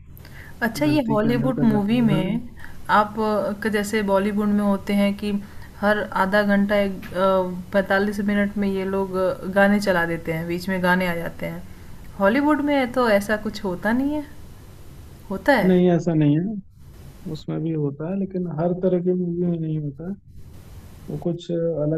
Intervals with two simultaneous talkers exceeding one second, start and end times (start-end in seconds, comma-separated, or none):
0.7-2.4